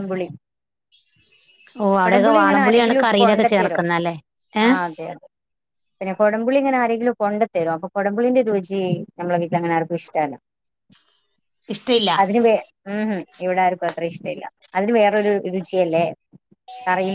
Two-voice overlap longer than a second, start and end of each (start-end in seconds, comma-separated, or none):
2.0-3.8